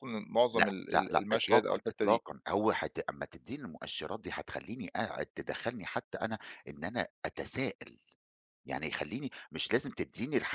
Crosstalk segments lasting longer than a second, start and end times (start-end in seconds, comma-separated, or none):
0.5-2.2